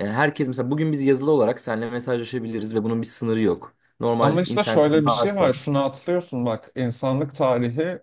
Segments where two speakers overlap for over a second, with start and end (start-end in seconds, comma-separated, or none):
4.2-5.5